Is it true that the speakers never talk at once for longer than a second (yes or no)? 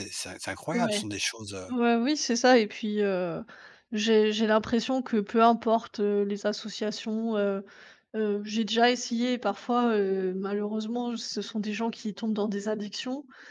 yes